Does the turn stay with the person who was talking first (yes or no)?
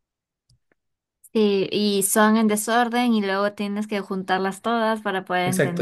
no